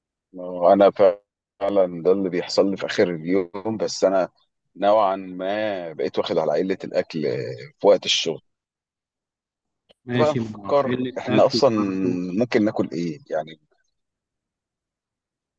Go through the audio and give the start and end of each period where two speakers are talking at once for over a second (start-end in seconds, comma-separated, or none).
10.2-11.7